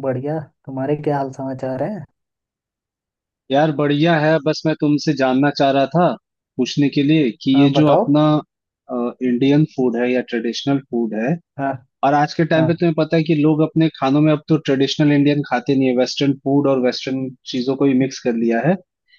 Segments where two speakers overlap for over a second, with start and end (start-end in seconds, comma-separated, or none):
none